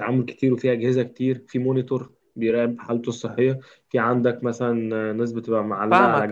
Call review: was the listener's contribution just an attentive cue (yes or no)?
no